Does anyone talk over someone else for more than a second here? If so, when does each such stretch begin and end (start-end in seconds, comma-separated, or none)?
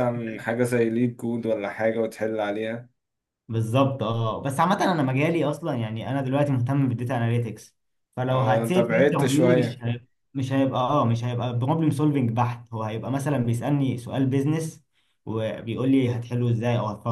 8.3-9.8